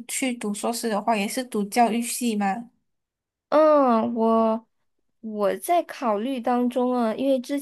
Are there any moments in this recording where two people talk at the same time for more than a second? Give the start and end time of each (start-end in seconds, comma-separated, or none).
none